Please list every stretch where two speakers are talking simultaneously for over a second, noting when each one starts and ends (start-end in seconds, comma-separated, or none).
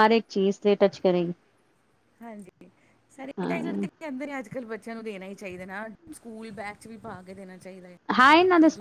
none